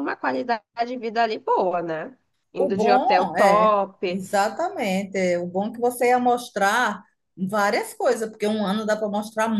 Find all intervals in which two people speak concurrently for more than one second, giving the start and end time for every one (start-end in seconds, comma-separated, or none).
2.6-4.2